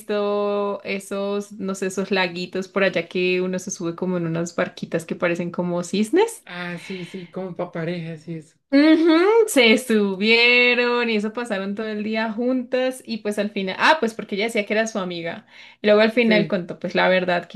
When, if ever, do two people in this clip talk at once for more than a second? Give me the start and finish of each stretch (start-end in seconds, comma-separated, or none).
none